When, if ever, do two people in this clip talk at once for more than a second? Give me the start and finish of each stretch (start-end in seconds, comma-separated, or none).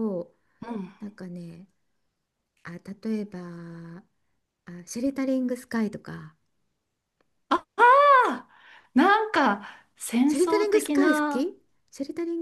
10.3-11.5